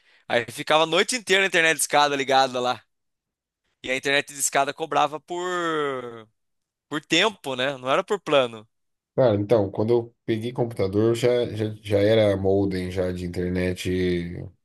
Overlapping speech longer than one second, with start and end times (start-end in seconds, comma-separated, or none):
none